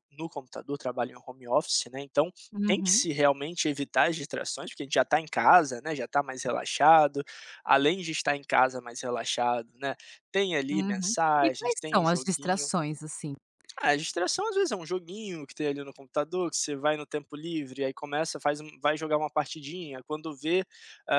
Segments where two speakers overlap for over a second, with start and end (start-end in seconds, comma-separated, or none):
10.7-12.7